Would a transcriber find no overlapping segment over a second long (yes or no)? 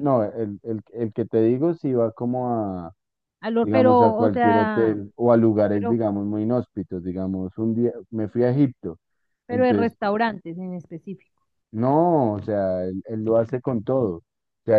no